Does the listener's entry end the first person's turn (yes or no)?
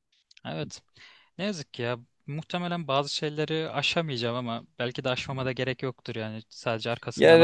yes